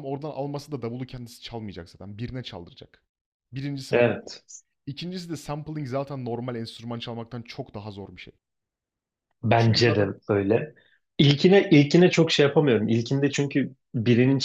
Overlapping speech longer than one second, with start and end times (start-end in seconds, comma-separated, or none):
none